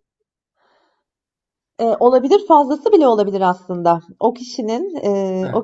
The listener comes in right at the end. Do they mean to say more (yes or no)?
no